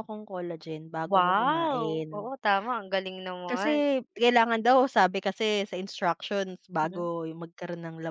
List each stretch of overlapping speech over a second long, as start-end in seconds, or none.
1.0-2.3